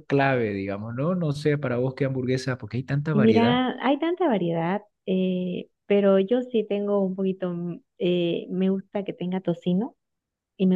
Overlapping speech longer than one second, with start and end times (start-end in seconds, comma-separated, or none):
none